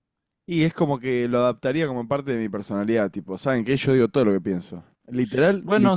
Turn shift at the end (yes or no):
yes